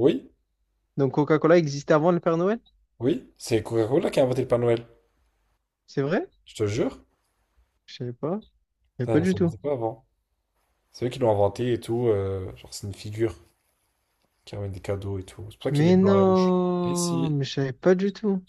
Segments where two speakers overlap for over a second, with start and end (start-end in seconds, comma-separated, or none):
15.7-17.4